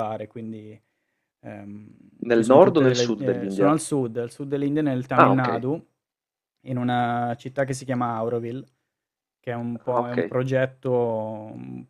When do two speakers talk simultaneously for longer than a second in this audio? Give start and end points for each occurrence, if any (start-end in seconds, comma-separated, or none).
2.3-3.7